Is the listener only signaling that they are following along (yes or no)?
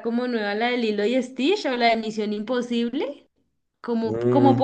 yes